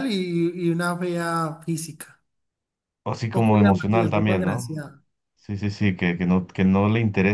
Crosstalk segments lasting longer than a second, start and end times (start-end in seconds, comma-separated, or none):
3.3-4.7